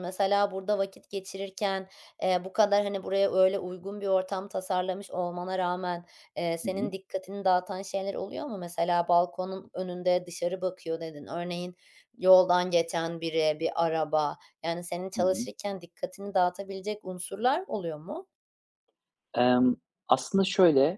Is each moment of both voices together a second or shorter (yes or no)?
yes